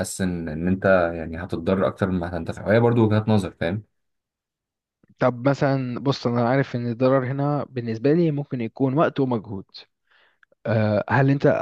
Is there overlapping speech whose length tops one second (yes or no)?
no